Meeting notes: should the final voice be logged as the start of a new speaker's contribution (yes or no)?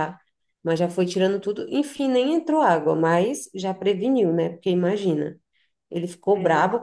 no